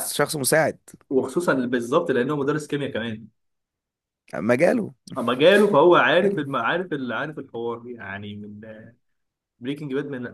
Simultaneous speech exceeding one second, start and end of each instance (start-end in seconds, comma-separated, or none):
none